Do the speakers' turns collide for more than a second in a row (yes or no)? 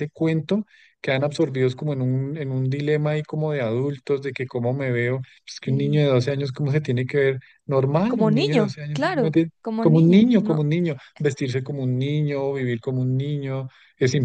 yes